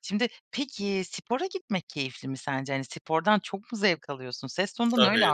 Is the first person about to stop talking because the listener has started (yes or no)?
yes